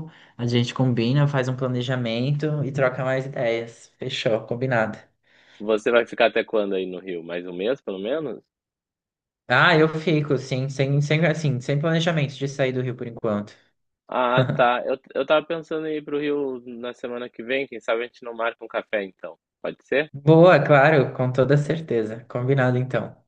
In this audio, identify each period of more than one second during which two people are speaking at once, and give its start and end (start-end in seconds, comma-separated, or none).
none